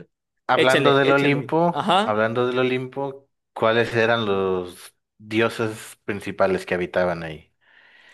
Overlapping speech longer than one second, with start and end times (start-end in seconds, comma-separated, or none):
0.5-2.2